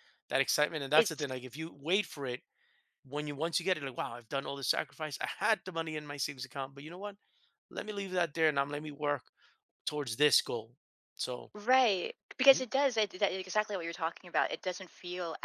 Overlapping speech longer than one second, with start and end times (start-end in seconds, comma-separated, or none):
none